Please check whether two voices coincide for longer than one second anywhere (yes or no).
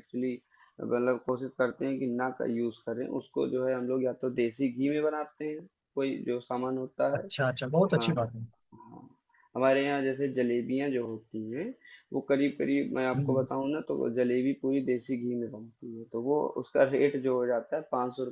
no